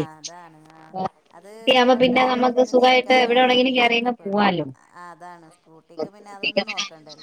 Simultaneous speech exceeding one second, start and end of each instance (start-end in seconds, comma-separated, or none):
2.0-4.3